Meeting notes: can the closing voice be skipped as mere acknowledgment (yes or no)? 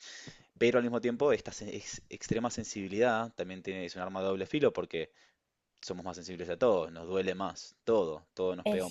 yes